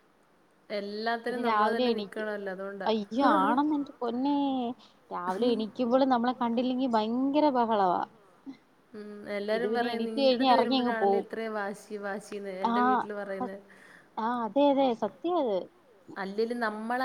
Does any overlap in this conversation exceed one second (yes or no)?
yes